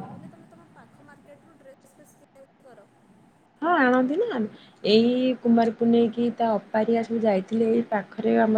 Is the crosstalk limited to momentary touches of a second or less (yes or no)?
yes